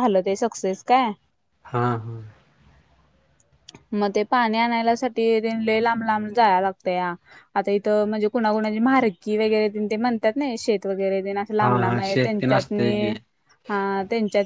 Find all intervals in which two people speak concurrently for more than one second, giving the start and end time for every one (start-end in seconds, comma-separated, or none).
11.6-13.1